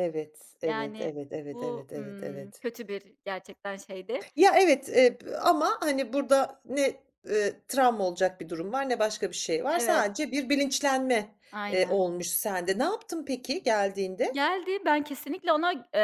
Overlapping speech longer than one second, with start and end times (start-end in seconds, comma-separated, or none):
0.6-2.6